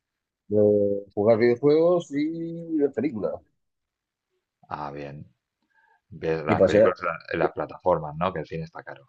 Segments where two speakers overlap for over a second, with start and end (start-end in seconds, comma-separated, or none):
none